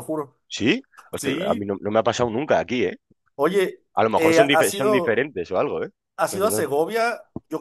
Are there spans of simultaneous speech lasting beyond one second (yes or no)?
yes